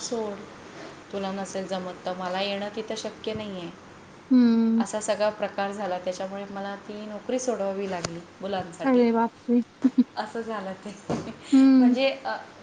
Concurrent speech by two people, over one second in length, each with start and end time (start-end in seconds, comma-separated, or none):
none